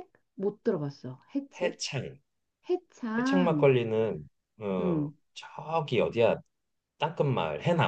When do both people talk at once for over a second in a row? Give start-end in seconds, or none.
none